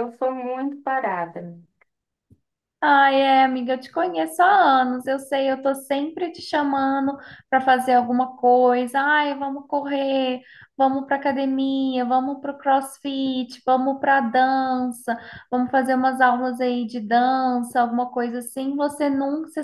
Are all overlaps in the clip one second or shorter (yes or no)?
yes